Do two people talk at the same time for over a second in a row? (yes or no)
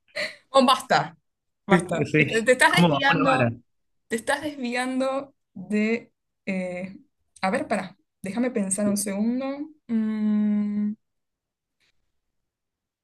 yes